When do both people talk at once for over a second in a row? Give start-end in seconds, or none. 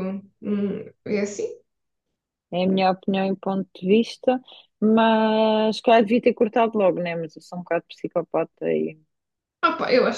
none